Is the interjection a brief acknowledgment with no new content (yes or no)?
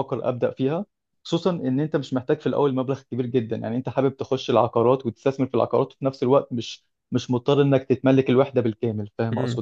no